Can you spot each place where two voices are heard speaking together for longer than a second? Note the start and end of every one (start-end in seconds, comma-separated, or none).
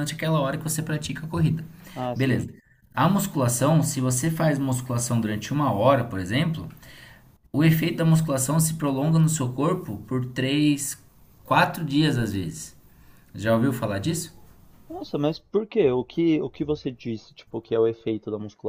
none